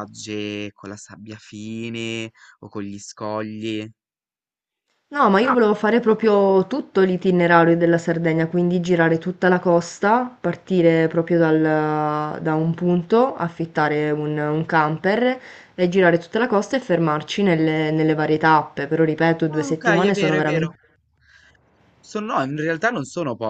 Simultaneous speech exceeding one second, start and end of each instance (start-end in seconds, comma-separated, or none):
19.5-20.7